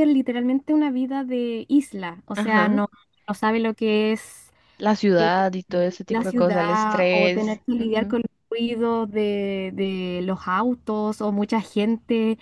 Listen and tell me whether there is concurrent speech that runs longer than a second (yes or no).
yes